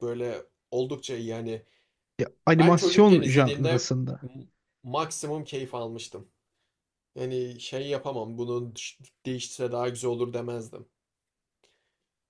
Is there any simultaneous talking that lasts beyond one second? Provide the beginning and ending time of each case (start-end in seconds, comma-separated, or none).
2.6-4.2